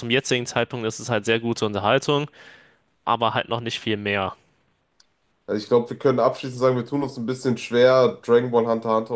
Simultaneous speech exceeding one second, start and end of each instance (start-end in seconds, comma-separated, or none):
none